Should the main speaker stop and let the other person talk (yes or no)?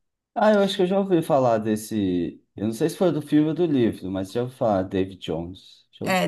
yes